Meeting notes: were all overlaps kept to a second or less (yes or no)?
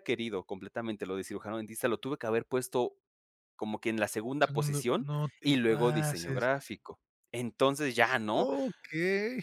no